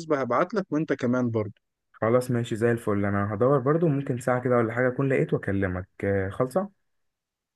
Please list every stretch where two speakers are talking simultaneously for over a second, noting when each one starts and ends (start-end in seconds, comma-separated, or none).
none